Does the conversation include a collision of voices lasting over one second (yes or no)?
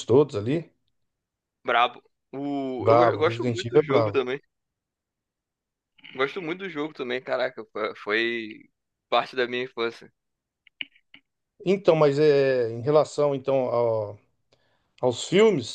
yes